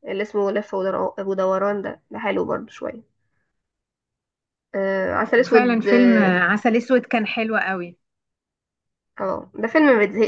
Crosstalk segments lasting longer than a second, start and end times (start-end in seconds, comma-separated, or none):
5.1-6.4